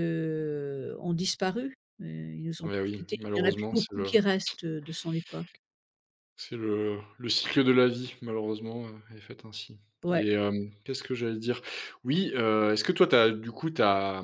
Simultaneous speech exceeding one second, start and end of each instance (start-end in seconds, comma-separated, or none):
2.6-4.1